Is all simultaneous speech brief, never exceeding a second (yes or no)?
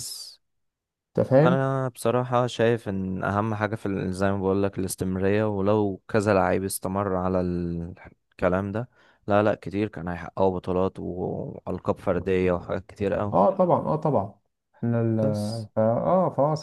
yes